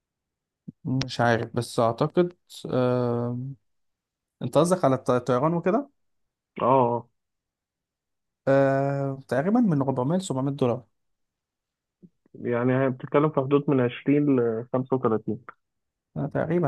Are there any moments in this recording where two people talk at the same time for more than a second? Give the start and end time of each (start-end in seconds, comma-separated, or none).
none